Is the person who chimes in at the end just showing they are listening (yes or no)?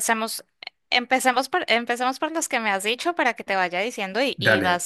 yes